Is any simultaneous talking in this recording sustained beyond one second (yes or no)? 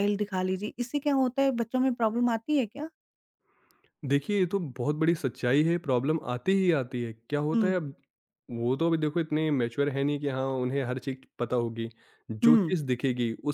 no